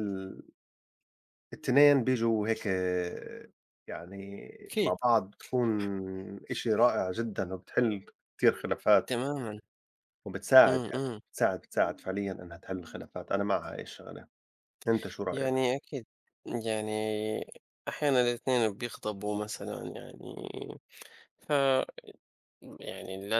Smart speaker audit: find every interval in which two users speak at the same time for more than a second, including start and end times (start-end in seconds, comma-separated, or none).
none